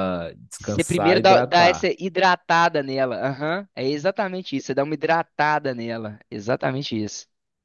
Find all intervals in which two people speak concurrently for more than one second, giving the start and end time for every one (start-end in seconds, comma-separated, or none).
0.6-1.9